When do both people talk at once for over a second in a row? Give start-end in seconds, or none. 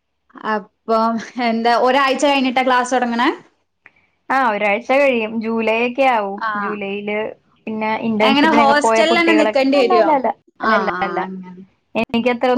8.3-10.1